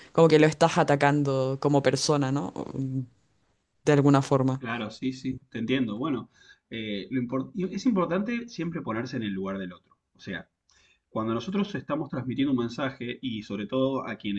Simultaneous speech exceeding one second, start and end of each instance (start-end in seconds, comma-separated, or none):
none